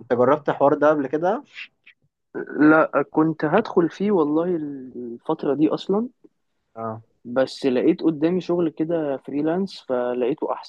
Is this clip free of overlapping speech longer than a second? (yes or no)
yes